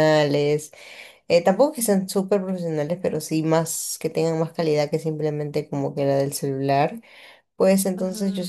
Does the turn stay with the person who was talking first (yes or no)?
yes